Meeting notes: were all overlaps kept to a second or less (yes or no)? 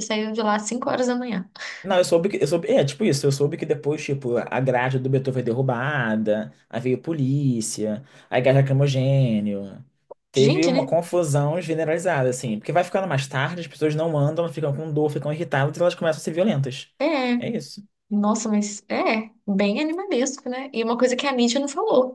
yes